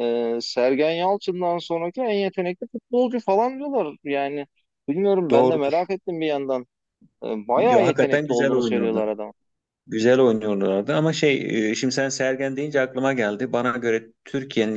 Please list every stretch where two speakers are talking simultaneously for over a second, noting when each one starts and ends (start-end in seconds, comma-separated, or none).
7.6-9.2